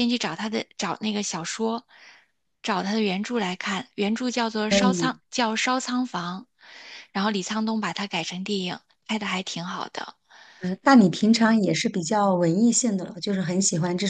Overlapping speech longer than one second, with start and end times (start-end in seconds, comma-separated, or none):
none